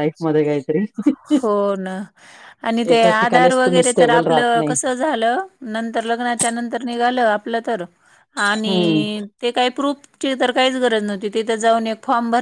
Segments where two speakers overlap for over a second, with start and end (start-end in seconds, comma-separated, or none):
2.9-4.7